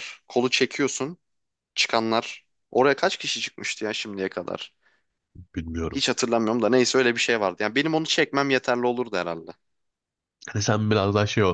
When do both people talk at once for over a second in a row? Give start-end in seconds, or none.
none